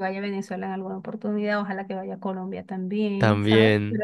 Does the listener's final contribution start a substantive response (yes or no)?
no